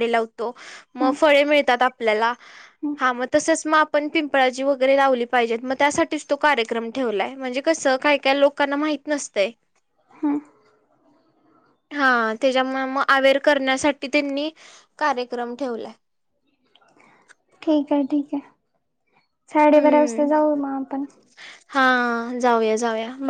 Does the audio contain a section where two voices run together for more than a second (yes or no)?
no